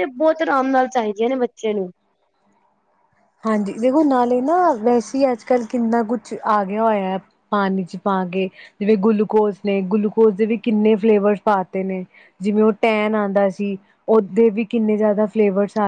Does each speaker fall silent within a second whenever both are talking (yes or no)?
yes